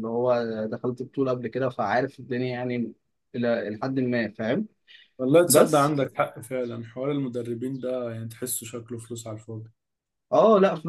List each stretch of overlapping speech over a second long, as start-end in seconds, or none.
none